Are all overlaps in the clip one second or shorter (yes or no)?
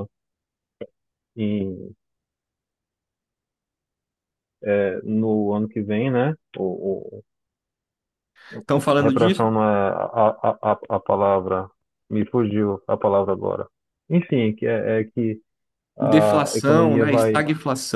no